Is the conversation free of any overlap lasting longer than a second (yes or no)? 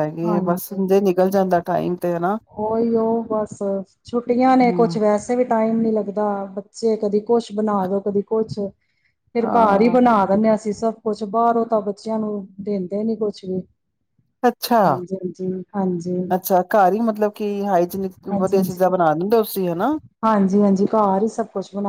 yes